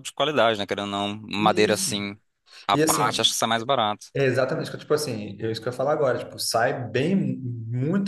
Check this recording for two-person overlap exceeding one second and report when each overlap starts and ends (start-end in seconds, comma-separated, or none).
none